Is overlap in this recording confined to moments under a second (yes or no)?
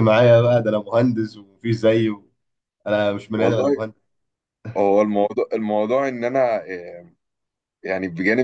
yes